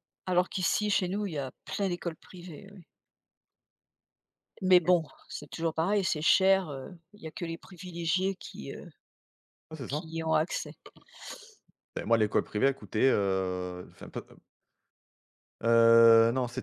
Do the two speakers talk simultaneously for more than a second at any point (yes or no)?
no